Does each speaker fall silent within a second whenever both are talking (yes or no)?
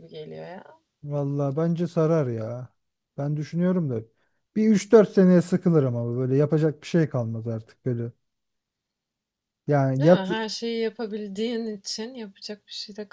yes